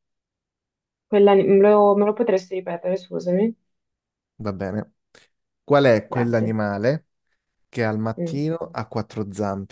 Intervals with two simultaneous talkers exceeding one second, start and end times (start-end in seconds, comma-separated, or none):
none